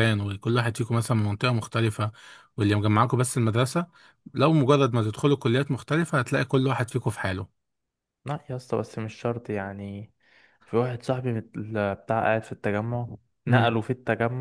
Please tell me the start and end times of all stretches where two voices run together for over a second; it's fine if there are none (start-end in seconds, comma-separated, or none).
none